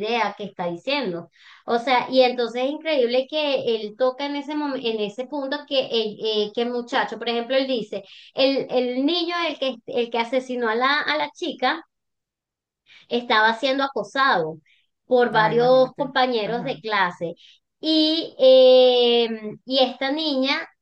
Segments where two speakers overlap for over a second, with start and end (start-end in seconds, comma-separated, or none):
15.3-16.8